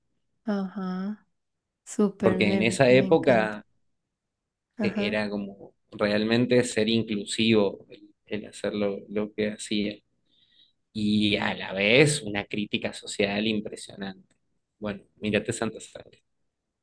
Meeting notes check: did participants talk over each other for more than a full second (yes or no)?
yes